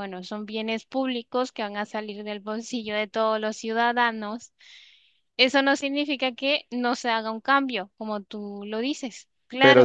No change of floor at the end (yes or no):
no